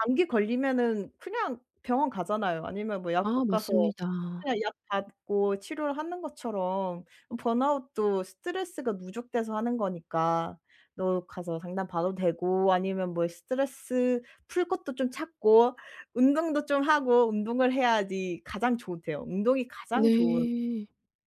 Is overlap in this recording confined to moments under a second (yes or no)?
yes